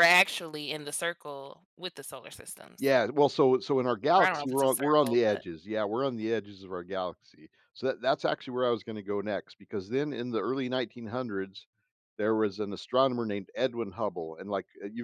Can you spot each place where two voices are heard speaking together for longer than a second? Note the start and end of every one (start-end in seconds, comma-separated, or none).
4.2-5.5